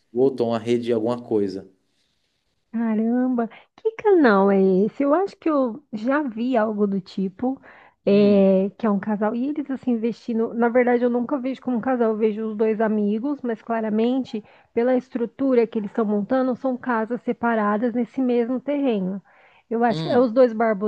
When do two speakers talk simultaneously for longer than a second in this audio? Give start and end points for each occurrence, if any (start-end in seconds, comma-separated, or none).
none